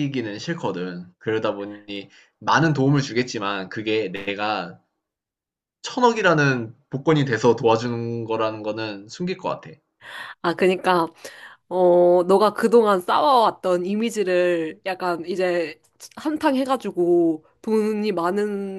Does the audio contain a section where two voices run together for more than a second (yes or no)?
no